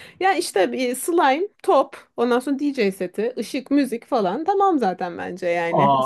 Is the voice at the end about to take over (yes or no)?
yes